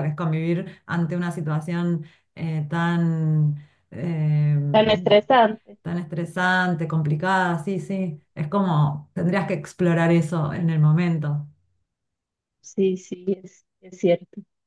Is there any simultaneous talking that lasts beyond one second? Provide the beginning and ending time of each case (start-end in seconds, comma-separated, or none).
none